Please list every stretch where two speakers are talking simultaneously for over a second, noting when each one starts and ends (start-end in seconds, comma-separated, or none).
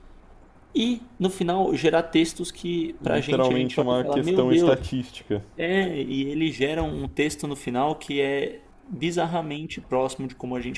3.0-4.8